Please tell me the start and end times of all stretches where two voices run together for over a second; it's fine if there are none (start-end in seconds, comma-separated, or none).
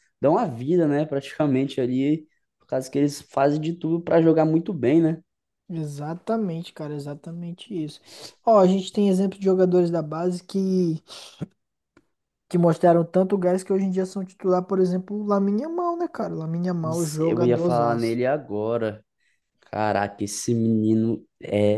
16.8-18.2